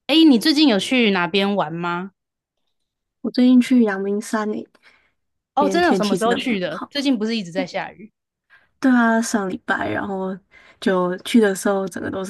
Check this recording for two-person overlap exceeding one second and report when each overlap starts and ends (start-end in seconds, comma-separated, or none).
5.6-6.9